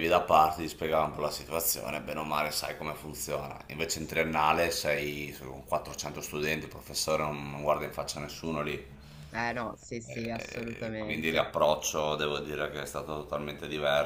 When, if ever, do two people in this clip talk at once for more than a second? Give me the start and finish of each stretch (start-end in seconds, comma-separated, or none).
10.1-11.5